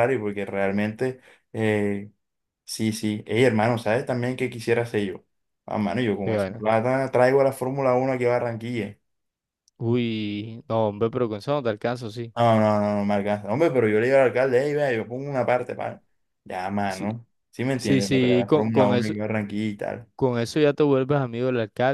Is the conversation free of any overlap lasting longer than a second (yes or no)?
no